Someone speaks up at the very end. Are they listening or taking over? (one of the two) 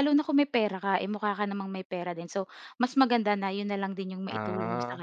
taking over